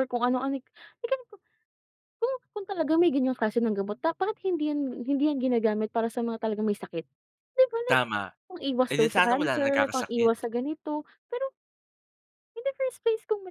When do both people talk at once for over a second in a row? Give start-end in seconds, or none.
8.9-10.5